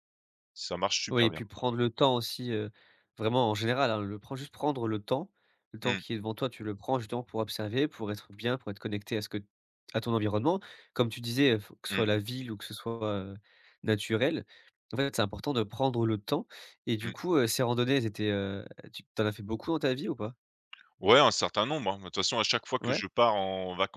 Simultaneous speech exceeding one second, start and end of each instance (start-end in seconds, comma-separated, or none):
none